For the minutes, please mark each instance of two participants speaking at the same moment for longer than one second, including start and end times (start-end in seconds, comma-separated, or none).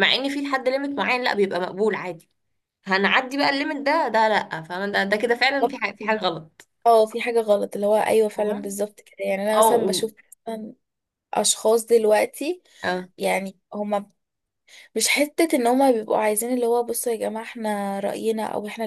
none